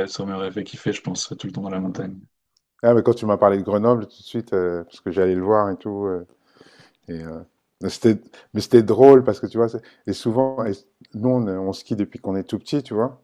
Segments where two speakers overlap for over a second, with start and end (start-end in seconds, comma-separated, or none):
none